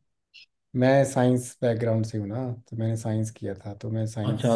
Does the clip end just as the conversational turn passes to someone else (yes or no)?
yes